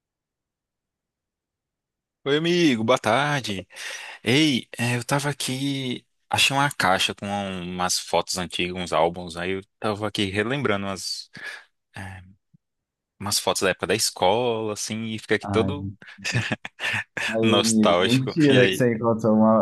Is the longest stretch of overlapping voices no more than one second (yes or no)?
no